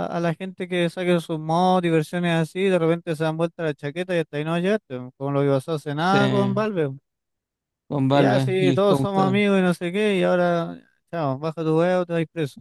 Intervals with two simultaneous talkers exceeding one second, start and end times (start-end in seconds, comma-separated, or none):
8.1-9.4